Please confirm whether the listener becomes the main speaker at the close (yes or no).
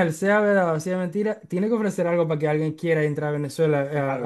yes